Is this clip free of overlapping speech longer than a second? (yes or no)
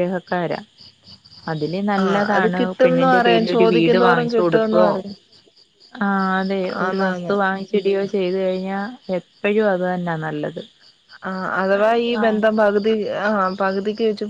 no